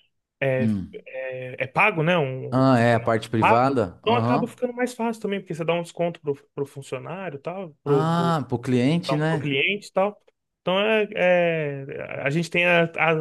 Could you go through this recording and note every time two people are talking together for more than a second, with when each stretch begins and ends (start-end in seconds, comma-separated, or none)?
2.5-4.5